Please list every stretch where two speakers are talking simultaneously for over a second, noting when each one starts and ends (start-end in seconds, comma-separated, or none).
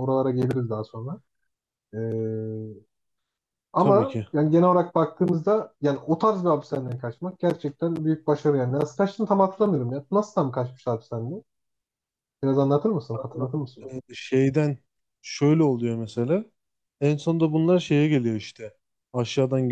none